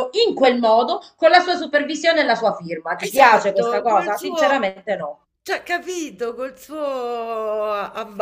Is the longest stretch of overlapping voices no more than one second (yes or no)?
no